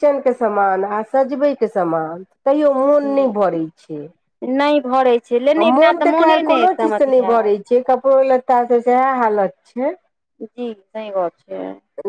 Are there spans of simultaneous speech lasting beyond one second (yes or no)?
yes